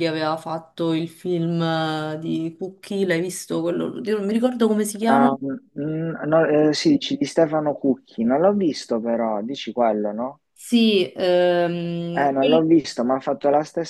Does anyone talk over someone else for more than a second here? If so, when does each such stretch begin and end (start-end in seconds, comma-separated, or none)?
none